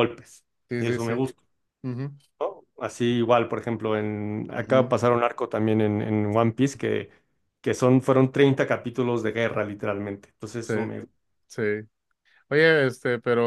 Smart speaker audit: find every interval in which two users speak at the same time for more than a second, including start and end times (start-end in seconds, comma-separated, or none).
none